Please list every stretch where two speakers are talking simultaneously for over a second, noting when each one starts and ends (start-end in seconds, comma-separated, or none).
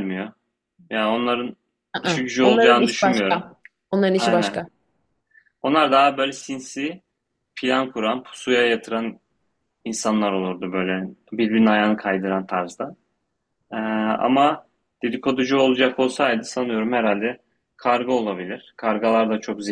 2.0-3.4